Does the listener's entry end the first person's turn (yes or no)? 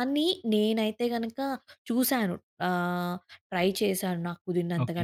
no